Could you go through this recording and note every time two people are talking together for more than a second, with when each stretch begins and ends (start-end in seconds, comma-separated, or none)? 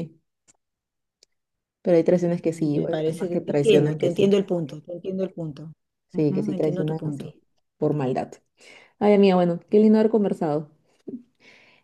2.7-4.3, 6.1-7.3